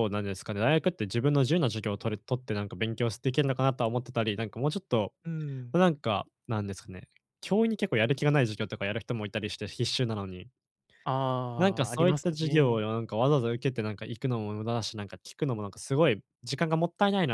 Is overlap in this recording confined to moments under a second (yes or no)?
no